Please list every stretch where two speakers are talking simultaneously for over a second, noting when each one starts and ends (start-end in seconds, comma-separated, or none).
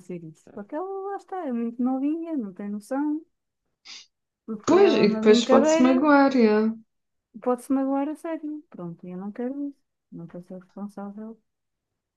4.7-6.0